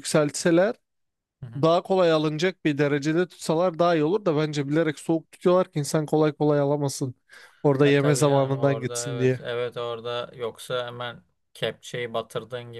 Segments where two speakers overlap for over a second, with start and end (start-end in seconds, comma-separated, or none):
7.8-9.4